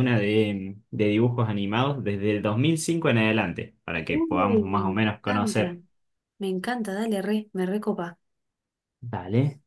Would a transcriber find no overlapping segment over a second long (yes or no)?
no